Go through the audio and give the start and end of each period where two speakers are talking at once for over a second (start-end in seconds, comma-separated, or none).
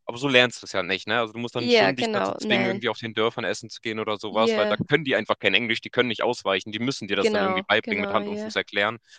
1.6-2.8, 7.2-8.5